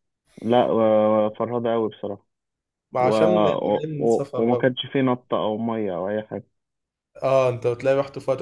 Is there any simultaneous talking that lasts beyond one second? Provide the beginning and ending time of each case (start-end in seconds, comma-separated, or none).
3.0-4.7